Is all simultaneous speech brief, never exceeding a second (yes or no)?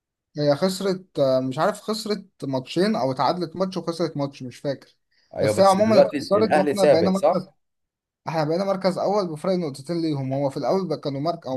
no